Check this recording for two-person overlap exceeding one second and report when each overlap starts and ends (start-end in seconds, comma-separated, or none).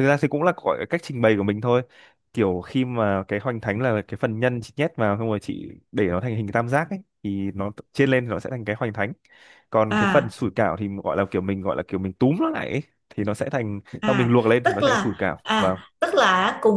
14.0-15.8